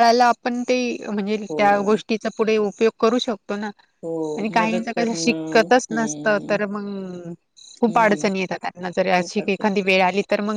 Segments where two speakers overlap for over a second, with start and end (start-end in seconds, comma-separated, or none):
4.6-6.6